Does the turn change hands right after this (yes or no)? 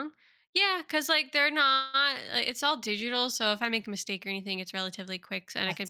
no